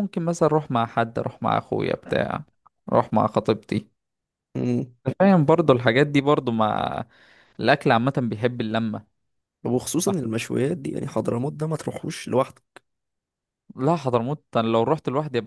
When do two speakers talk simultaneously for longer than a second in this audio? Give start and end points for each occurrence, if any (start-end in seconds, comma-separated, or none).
none